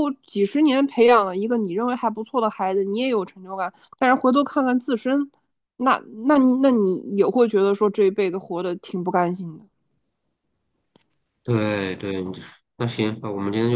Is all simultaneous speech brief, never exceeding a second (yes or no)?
yes